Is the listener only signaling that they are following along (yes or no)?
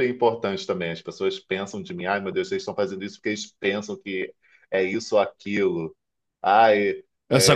no